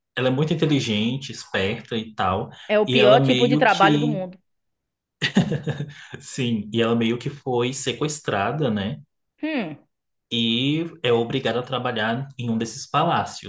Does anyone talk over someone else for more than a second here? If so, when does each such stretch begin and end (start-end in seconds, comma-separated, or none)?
2.9-4.2